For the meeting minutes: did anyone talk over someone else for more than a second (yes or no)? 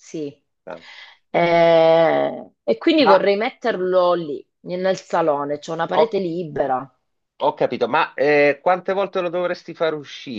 no